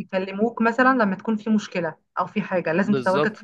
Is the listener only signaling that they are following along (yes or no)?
no